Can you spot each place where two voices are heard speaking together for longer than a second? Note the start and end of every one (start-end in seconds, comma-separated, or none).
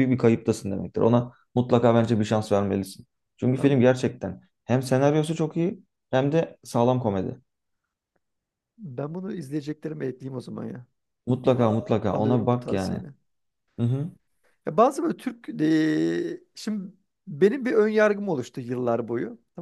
11.4-13.0